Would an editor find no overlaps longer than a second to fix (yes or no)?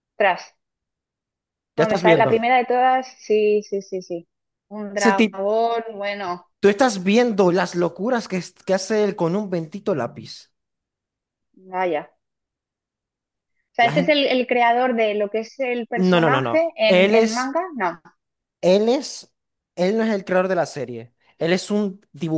no